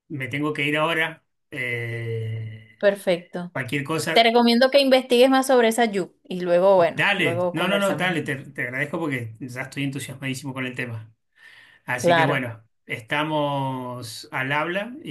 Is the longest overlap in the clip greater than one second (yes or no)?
yes